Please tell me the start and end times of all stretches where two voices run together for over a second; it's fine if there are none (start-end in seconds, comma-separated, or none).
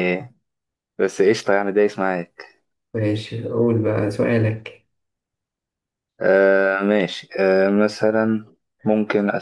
none